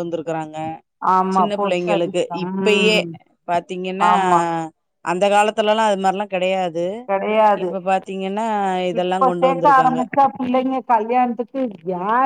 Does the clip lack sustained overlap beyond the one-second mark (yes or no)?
no